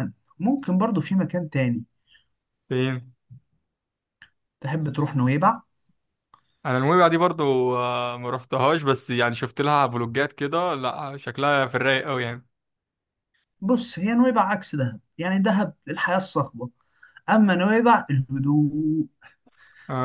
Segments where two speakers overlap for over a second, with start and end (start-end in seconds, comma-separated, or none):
none